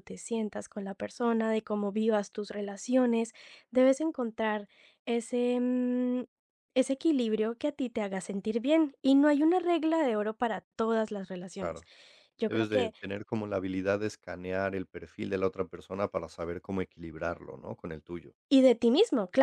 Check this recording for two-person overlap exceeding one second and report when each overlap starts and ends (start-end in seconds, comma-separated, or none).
none